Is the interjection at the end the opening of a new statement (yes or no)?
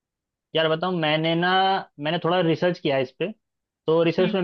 no